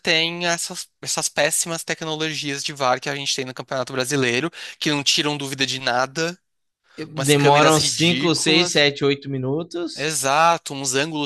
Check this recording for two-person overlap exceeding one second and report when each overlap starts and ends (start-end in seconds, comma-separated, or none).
7.3-8.8